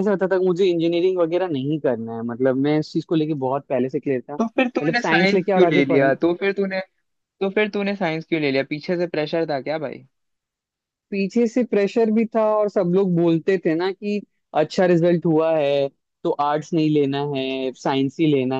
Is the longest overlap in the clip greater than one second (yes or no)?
yes